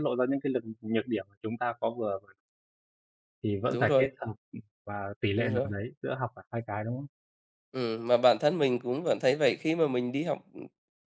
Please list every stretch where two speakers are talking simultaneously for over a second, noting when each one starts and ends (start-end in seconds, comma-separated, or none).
none